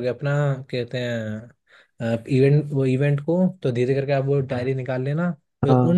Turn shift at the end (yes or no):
no